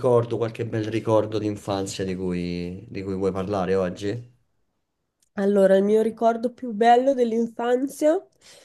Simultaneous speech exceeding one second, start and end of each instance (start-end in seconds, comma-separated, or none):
none